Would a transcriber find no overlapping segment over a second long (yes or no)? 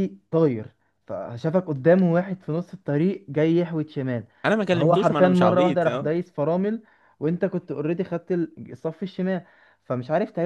no